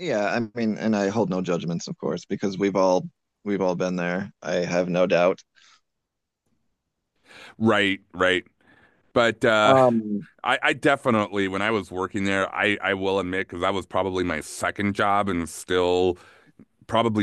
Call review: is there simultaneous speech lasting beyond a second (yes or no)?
no